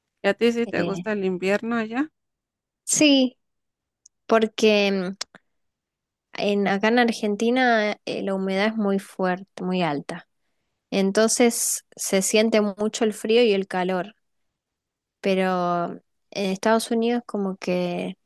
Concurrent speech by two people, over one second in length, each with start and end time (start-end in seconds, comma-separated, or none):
none